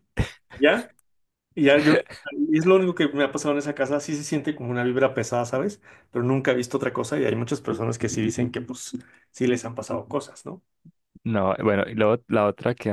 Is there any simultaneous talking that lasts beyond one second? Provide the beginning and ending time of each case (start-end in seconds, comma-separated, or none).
none